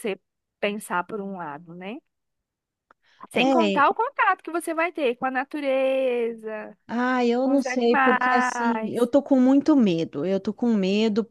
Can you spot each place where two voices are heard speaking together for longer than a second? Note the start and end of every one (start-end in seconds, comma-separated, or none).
7.4-9.1